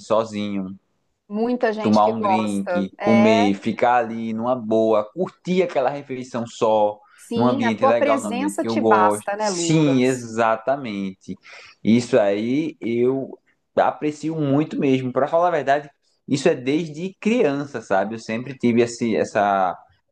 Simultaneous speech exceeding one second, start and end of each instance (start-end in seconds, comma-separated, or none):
1.8-3.5, 7.3-10.3